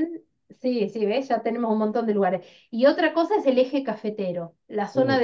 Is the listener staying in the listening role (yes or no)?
yes